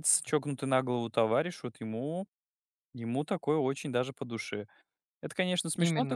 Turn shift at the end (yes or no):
no